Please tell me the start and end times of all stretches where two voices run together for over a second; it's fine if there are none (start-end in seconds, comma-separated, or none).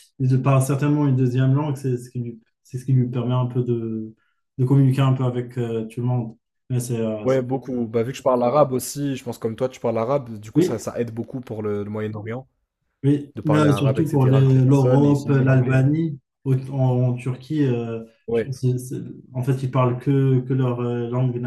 13.3-15.8